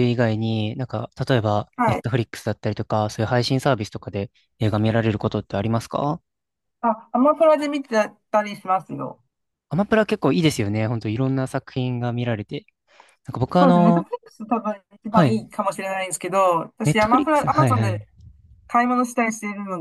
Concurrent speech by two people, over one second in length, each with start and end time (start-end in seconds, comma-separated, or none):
16.9-18.1